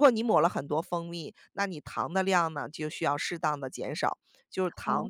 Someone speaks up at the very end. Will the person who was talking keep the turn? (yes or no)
yes